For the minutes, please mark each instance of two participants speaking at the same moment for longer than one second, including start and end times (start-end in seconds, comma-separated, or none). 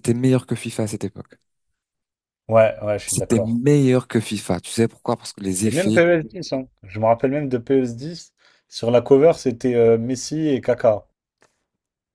none